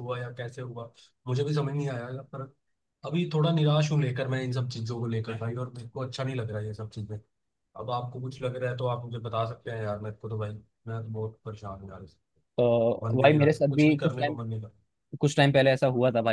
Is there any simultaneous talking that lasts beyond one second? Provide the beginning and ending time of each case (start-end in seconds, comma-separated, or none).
13.0-14.4